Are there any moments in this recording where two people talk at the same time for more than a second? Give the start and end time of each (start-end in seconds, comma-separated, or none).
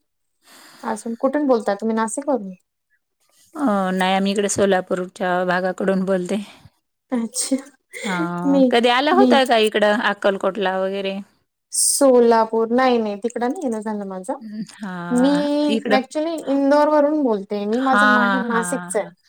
none